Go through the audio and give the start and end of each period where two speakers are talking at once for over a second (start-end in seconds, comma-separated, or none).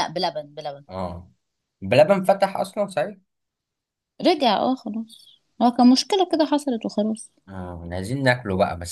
none